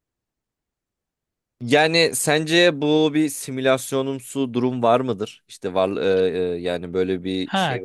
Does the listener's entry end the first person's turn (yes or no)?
yes